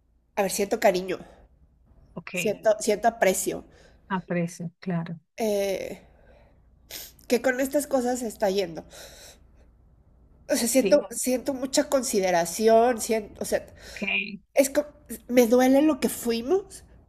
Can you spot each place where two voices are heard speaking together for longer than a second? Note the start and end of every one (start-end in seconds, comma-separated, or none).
none